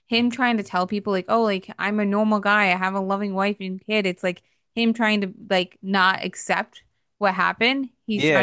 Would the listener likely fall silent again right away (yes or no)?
no